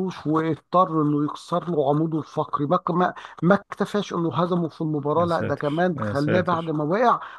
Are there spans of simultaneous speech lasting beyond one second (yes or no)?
yes